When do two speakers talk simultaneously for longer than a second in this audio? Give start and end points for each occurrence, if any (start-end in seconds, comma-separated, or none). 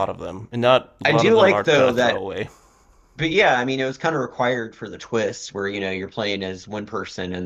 1.1-2.2